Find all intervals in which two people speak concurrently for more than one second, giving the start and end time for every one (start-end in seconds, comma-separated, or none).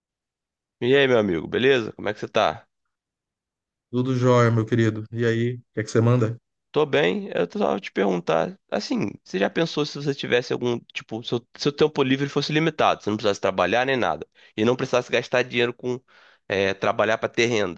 none